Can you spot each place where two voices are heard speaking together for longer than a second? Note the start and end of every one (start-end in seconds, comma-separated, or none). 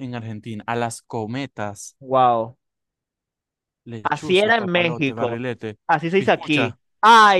4.0-5.4